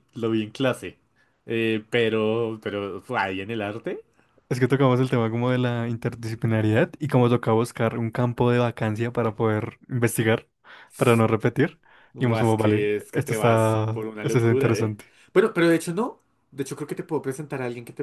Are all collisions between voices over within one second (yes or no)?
no